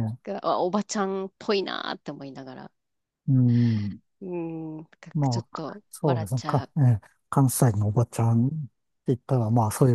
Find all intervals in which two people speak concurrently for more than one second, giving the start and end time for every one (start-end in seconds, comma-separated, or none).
5.1-6.7